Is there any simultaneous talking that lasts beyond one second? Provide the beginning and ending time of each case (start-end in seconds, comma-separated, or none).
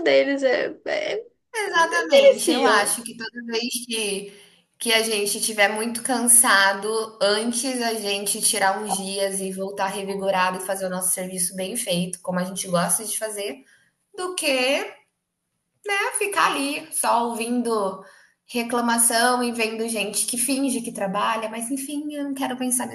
1.7-3.0